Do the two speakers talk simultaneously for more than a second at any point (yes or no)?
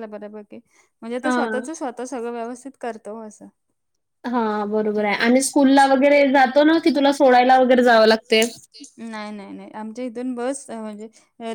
no